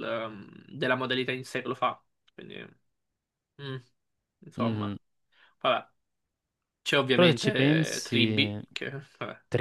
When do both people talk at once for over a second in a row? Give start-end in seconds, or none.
7.1-8.6